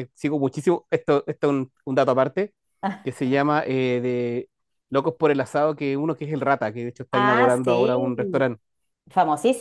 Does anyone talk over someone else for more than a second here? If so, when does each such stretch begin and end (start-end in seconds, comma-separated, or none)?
7.1-8.4